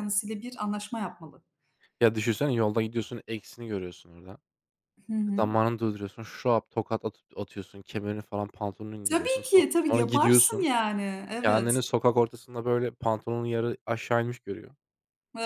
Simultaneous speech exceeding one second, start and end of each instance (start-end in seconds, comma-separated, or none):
9.1-10.7